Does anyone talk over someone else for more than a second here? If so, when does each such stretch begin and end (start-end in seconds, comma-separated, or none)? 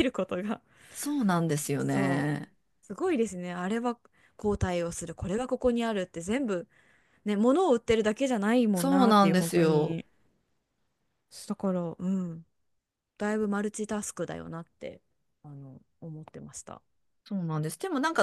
8.7-10.0